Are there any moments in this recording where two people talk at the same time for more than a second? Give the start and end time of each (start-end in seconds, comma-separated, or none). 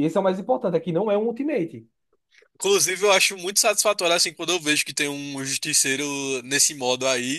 none